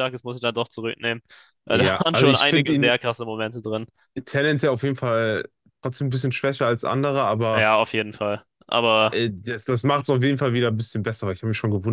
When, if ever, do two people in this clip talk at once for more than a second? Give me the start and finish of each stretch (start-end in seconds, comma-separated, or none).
1.7-2.9